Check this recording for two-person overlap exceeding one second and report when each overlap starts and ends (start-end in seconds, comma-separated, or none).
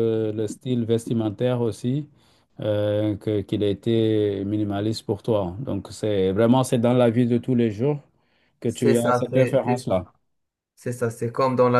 8.7-10.1